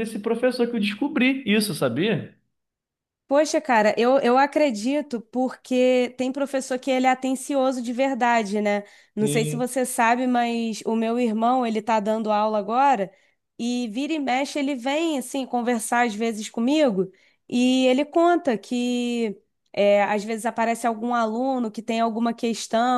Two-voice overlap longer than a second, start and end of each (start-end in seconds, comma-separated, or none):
none